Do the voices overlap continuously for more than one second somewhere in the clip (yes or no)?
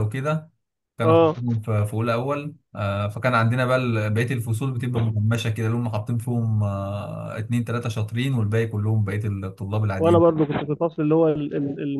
no